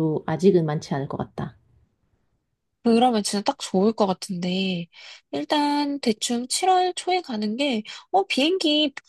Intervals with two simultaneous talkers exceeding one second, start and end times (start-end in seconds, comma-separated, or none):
none